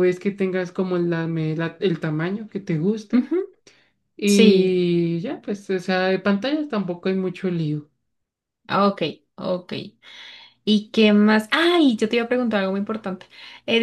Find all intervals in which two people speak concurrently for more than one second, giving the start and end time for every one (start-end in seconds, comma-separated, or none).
none